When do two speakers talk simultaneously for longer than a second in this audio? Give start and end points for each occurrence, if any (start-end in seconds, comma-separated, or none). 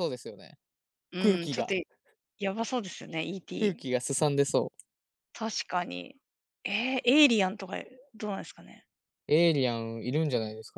none